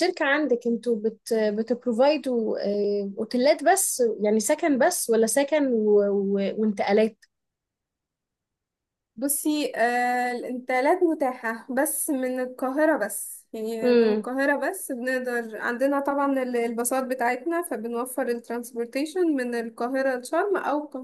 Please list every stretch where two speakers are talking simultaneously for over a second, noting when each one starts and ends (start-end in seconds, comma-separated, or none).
none